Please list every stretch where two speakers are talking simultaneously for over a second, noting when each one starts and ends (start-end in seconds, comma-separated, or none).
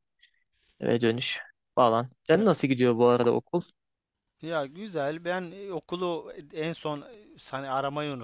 none